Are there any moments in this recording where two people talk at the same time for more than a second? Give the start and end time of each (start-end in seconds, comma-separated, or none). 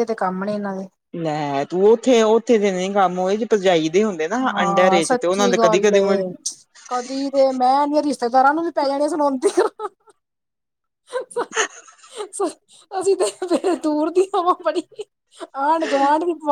4.5-6.0